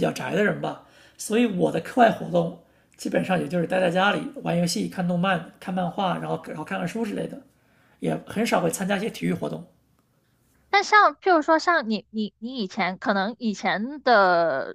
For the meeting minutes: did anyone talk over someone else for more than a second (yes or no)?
no